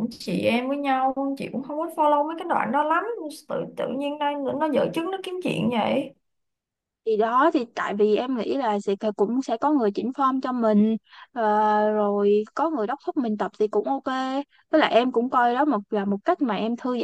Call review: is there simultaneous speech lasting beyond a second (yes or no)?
no